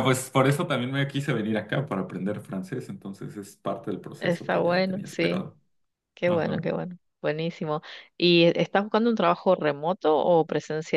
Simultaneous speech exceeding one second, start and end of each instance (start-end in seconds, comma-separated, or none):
4.2-5.5